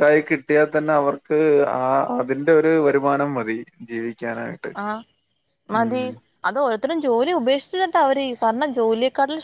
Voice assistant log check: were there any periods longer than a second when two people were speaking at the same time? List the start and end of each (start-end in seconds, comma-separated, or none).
none